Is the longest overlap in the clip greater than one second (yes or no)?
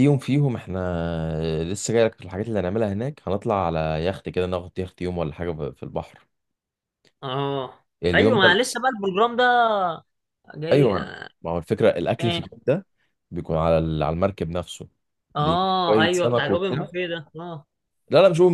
yes